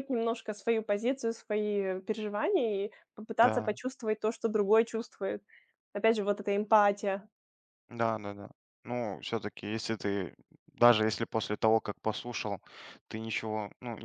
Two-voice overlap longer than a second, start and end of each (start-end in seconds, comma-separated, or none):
none